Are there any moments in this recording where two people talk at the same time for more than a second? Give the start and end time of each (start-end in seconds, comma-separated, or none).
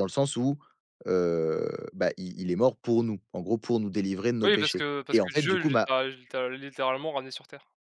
4.4-5.9